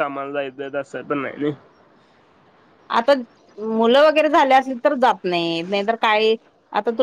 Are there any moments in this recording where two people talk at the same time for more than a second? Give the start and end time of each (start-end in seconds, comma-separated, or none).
none